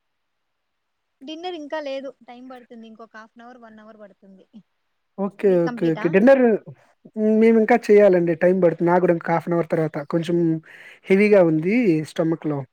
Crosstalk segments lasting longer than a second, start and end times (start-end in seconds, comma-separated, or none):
none